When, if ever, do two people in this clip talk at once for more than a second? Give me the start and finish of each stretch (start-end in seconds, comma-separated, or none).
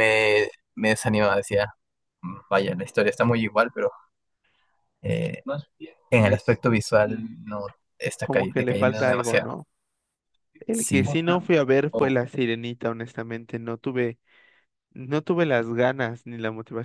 8.2-9.5